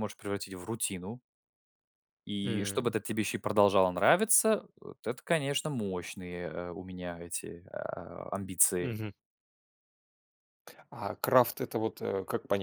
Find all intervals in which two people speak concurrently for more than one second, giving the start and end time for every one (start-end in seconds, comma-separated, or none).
none